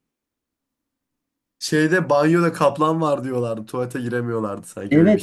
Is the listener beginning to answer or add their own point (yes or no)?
yes